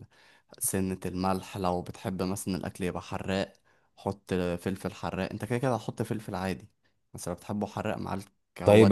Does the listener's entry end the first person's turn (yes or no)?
yes